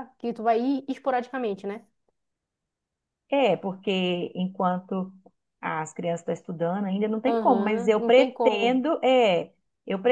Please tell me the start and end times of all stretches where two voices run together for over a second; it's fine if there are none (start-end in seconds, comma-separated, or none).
7.3-8.8